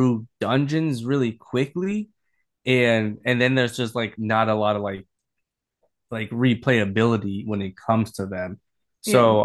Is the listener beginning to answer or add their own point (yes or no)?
no